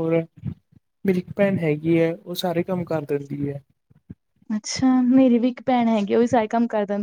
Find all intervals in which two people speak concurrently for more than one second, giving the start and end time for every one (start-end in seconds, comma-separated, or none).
none